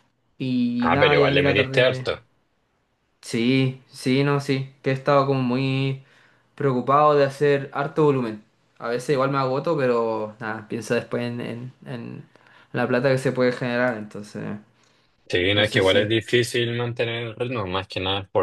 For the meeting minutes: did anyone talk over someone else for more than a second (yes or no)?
yes